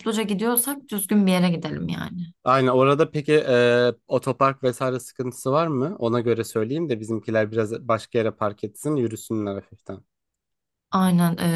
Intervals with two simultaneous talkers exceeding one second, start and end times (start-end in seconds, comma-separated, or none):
none